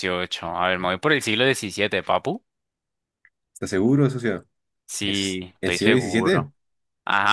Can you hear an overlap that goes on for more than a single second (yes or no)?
yes